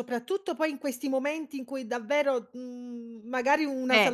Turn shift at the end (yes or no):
no